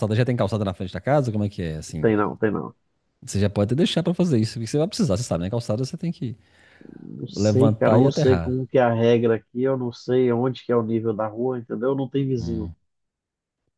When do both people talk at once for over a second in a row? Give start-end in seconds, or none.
7.3-8.6